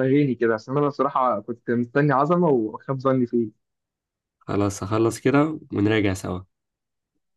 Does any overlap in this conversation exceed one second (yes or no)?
no